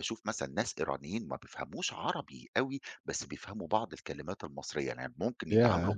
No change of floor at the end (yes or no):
yes